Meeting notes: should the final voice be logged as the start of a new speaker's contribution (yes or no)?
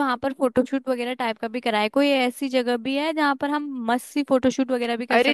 yes